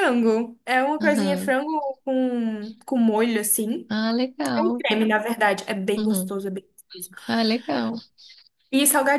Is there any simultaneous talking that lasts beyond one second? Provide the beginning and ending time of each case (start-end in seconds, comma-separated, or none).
none